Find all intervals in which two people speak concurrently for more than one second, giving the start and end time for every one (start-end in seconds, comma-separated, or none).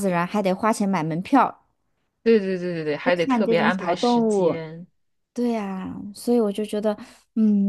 3.0-4.6